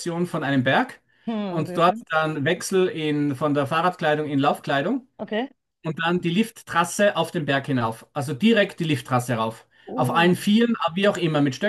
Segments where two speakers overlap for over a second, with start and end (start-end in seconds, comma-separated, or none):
none